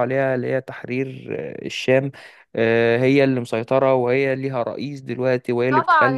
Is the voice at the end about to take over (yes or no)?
yes